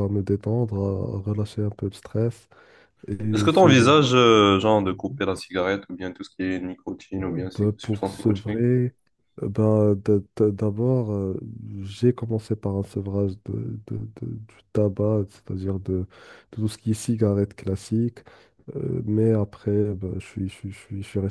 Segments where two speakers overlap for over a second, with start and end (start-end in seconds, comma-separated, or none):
7.2-8.7